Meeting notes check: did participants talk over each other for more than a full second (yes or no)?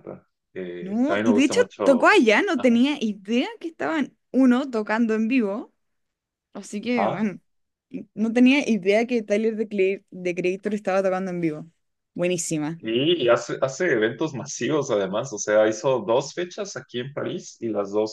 yes